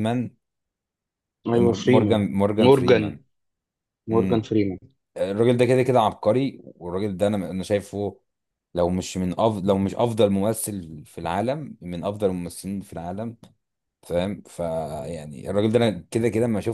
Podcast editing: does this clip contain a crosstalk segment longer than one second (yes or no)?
yes